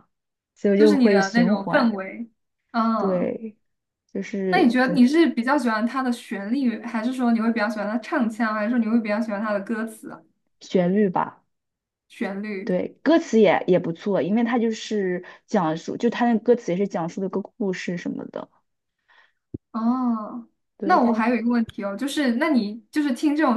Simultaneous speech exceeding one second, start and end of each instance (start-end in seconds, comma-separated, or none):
0.8-2.0